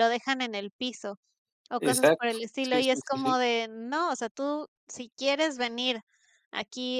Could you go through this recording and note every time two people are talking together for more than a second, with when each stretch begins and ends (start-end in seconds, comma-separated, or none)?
1.8-3.3